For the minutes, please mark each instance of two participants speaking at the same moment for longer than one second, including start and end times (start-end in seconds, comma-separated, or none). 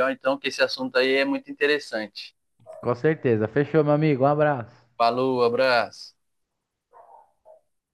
none